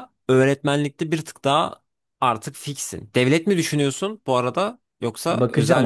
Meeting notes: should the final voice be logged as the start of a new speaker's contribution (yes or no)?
yes